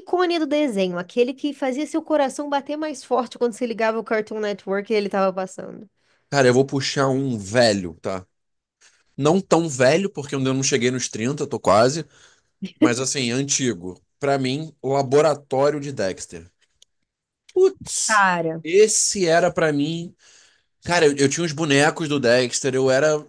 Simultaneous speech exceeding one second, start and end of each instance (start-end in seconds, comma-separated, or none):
none